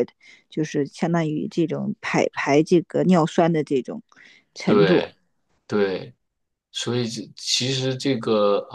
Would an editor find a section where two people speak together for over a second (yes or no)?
no